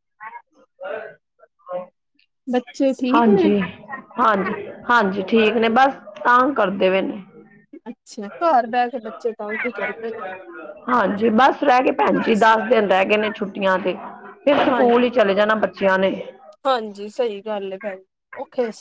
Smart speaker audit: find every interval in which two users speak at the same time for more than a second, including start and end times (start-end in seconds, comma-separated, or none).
none